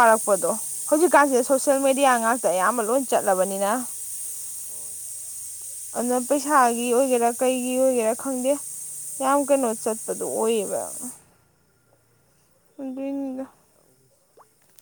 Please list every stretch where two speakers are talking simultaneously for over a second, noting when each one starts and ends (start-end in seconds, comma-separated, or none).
none